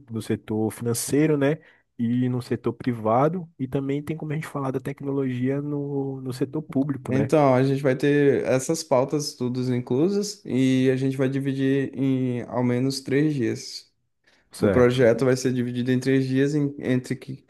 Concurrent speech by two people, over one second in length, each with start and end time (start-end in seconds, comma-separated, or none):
none